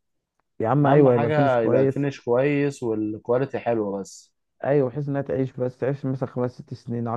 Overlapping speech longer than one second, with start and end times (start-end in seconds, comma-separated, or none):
0.8-2.1